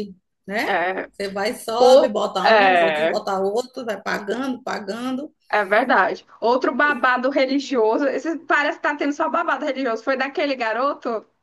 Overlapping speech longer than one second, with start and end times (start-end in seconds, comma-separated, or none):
1.8-3.2